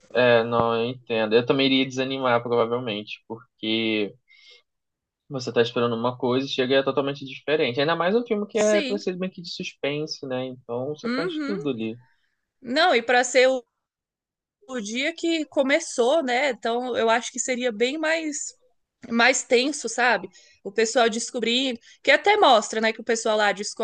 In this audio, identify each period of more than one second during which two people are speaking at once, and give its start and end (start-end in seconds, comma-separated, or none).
none